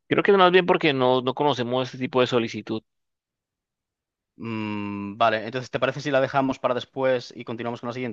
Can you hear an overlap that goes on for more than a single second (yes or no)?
no